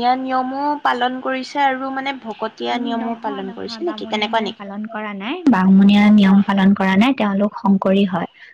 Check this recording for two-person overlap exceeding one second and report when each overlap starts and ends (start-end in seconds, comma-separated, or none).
2.7-4.6